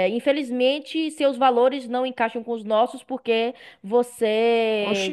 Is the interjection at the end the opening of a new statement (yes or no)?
no